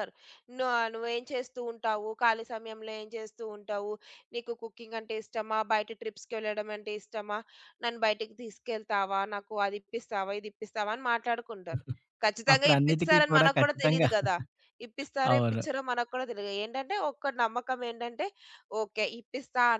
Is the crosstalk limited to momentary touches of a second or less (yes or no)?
no